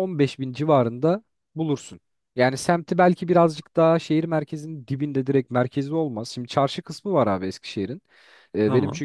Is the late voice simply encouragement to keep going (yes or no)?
yes